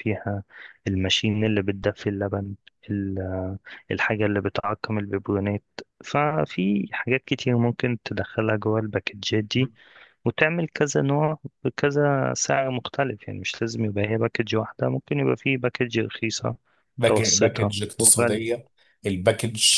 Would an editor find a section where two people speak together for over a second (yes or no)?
yes